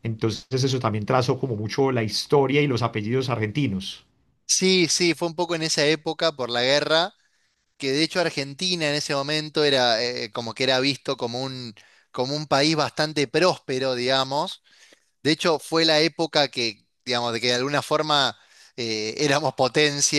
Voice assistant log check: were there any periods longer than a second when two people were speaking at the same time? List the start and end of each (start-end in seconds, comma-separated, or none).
none